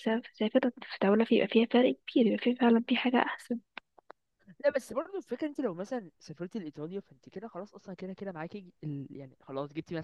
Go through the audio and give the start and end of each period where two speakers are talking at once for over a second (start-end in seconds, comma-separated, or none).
none